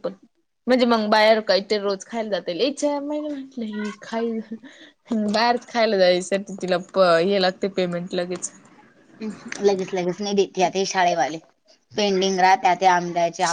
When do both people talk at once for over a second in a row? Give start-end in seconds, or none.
none